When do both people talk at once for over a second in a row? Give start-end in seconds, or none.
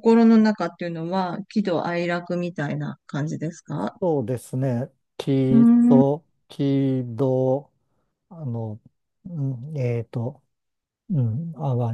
none